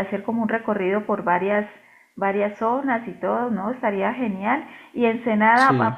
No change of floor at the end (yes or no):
yes